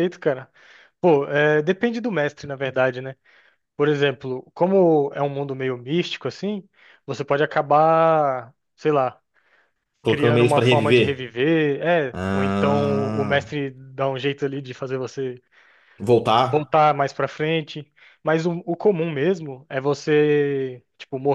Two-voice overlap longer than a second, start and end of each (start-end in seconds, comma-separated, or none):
10.1-11.3, 12.1-13.5